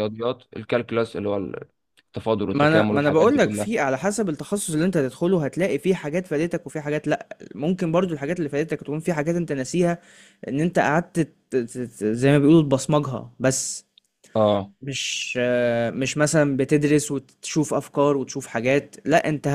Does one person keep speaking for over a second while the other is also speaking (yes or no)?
yes